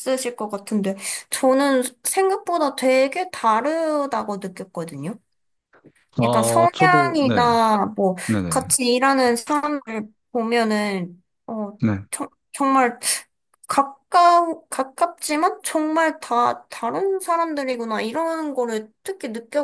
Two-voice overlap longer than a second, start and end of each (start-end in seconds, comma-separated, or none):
6.2-7.5